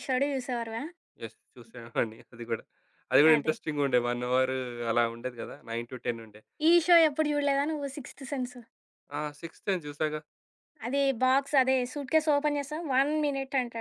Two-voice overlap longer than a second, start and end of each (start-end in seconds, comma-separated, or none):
none